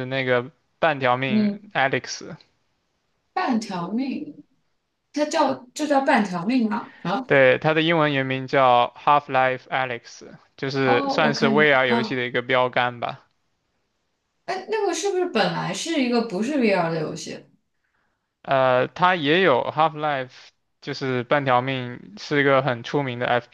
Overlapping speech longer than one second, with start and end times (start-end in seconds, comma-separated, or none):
10.8-12.2